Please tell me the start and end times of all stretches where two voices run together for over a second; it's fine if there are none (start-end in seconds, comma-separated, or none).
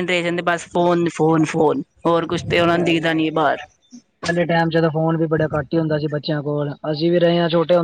none